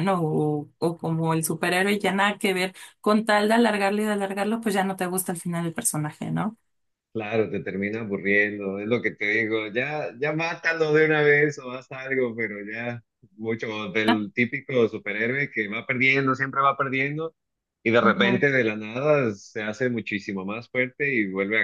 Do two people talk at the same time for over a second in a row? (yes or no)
no